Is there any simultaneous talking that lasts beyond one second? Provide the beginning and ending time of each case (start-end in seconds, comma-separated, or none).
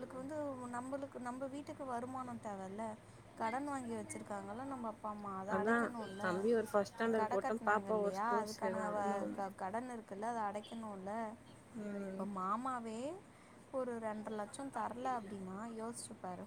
6.9-9.5